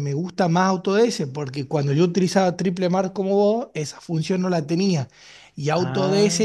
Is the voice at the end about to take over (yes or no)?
no